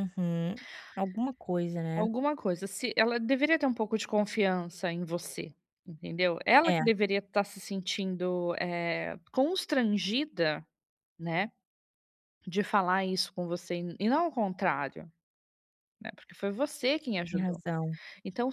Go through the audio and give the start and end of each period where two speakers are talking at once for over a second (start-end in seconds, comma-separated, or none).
none